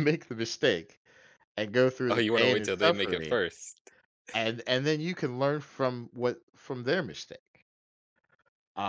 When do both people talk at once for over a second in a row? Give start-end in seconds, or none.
2.1-3.4